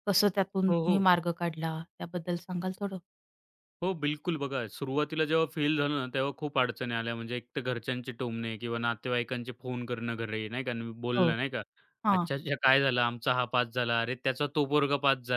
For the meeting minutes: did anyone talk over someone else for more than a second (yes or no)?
no